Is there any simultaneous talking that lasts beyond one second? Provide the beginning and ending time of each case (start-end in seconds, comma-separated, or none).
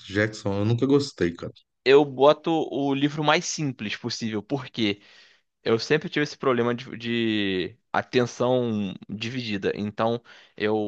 none